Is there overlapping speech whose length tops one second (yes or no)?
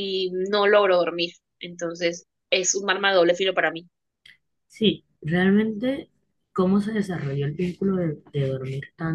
no